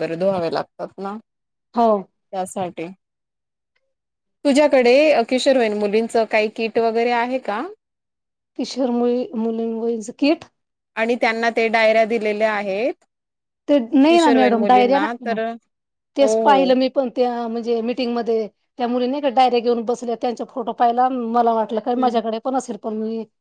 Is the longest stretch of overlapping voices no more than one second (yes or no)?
yes